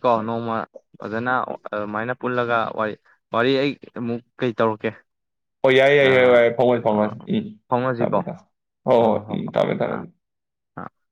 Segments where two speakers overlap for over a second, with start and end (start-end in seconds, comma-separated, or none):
none